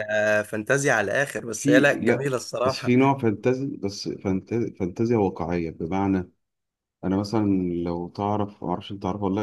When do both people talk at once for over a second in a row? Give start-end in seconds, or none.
1.6-3.0